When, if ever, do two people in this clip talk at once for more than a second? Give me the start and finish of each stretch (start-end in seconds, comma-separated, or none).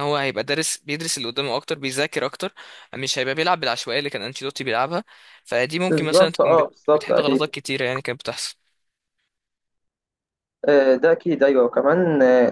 5.9-7.5